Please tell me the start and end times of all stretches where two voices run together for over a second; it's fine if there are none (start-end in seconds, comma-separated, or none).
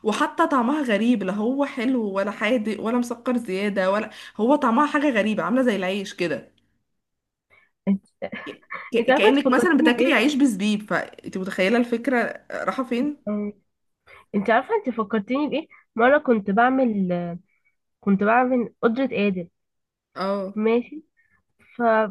9.0-10.2